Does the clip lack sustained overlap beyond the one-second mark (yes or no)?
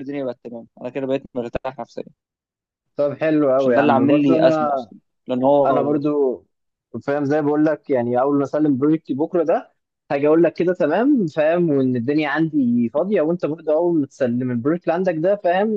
no